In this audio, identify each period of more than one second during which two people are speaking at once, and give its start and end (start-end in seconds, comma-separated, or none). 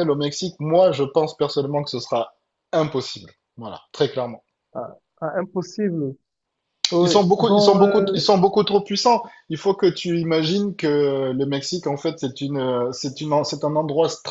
7.0-8.4